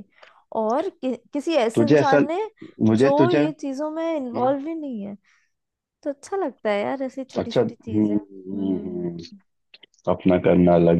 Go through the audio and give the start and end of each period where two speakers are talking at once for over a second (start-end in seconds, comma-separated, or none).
7.4-9.2